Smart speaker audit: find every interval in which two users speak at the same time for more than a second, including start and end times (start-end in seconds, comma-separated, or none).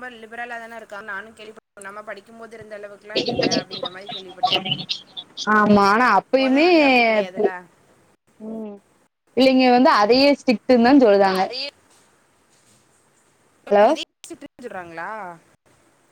none